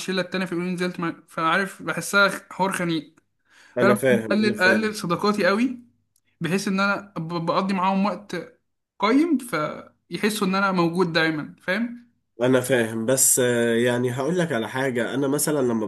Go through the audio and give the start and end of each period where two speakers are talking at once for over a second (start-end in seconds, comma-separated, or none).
3.8-5.0